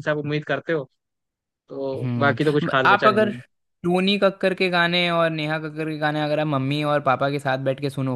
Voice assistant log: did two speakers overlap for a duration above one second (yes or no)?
yes